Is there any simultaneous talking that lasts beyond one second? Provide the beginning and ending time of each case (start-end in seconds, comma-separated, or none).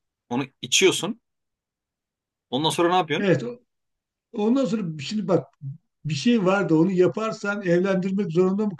none